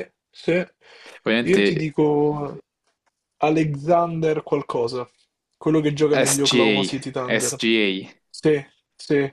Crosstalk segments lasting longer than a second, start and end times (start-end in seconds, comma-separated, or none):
6.1-7.6